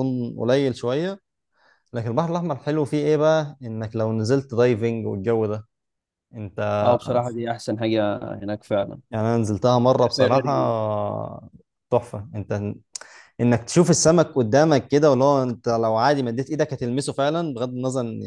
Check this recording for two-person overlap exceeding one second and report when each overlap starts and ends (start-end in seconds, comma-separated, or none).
none